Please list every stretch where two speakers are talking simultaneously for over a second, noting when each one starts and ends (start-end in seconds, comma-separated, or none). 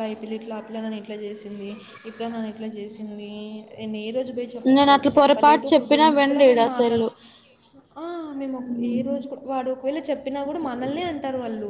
4.8-7.1